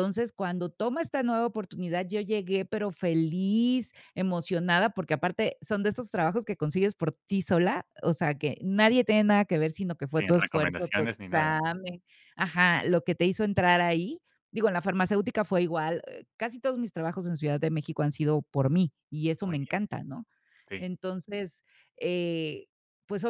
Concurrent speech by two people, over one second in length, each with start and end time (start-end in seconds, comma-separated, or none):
10.1-11.5